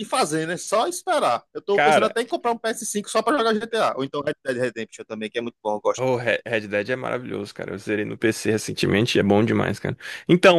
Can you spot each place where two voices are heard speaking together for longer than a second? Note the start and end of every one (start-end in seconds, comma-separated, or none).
none